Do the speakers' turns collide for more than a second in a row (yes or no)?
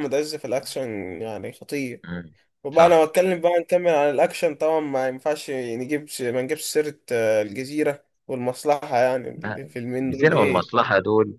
yes